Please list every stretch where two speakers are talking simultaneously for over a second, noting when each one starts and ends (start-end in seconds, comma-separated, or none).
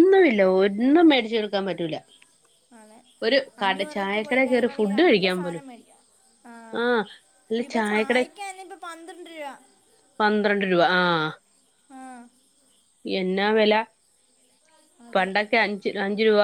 3.6-5.6